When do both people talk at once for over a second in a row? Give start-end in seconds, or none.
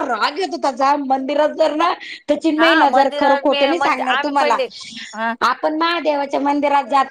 2.6-4.6